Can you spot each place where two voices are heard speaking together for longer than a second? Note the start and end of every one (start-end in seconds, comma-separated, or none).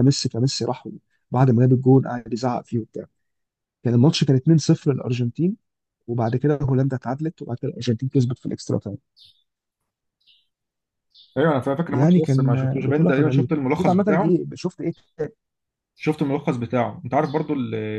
11.9-14.4